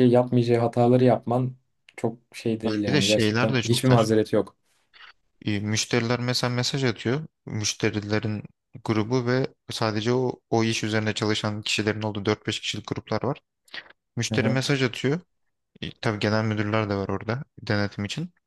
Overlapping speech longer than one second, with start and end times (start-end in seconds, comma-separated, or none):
2.9-4.1